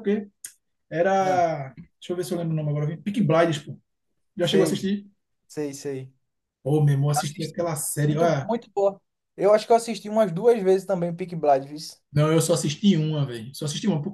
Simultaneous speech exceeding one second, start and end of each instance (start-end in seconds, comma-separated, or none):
7.1-8.5